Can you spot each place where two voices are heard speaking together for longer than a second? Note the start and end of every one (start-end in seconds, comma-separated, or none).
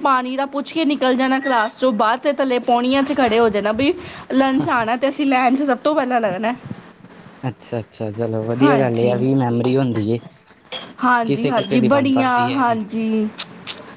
11.2-12.8